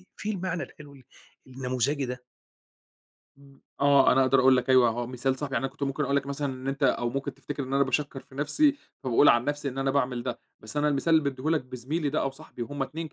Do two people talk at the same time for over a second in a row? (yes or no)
no